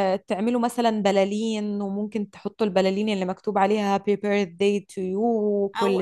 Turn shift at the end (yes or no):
yes